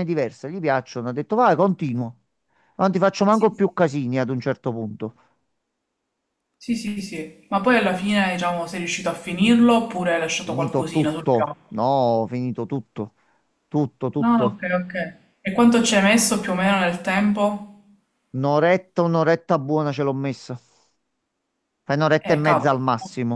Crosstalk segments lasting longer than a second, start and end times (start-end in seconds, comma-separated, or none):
10.4-11.9